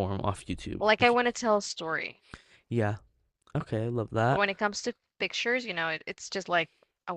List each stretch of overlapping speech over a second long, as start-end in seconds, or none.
none